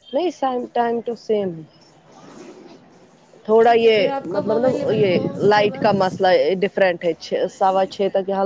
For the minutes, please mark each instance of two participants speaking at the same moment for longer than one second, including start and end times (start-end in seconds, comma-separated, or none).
3.6-6.0